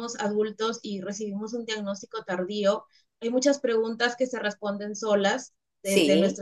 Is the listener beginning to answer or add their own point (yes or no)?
no